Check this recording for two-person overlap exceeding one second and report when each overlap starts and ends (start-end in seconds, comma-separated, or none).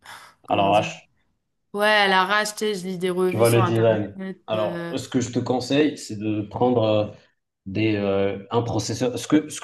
3.3-4.9